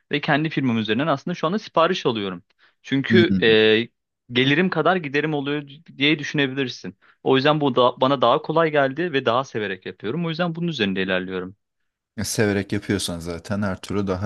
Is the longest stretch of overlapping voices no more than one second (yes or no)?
yes